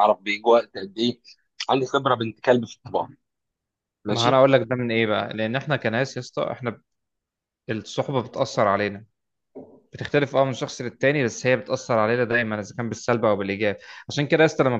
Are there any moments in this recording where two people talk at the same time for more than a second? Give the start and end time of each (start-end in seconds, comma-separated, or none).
none